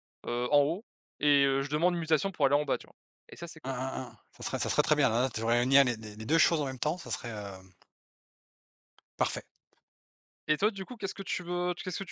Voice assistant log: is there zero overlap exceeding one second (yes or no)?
yes